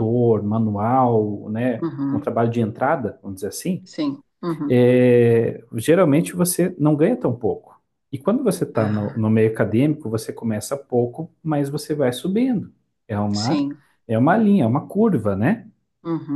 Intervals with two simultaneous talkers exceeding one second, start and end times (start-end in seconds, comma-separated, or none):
none